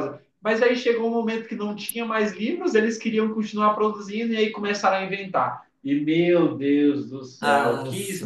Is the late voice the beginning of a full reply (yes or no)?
no